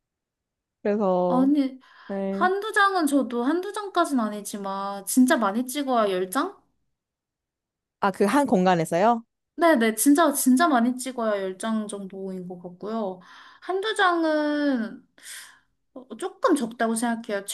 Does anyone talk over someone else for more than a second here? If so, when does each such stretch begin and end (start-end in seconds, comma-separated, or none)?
none